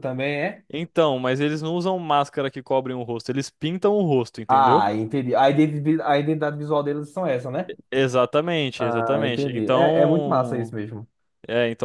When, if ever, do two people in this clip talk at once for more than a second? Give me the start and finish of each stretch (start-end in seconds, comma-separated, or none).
8.8-10.8